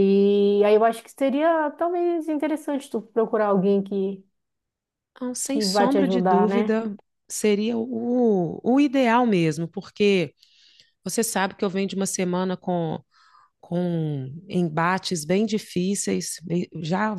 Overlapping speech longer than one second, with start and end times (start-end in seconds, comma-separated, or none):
5.4-6.8